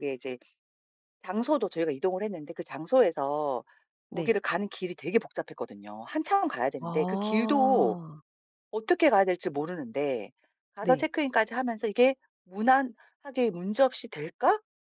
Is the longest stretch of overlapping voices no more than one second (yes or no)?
no